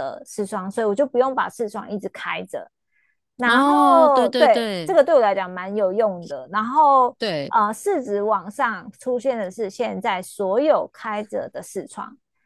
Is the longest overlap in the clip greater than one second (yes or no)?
yes